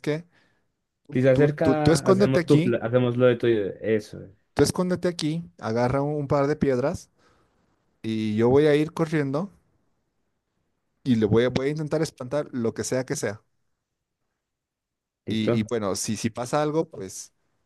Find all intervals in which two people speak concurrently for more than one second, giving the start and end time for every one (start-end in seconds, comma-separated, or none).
1.3-2.8